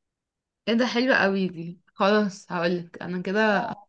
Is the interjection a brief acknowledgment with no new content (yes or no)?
yes